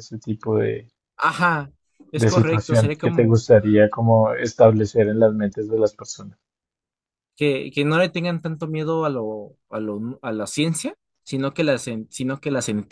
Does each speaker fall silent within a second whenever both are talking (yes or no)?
no